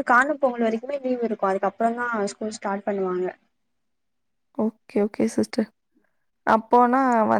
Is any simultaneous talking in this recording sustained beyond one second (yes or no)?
no